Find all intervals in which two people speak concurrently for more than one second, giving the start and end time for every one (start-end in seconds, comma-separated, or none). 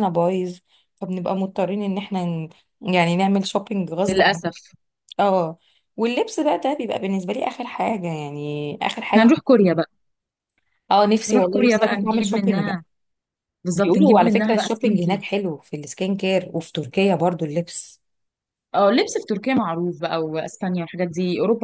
11.3-12.8, 13.7-15.3